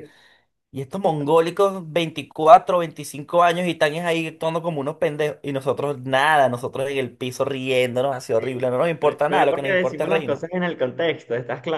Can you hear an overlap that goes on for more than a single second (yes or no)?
yes